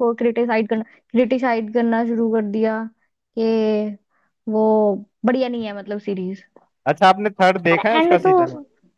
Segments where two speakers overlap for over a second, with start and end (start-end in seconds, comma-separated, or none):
none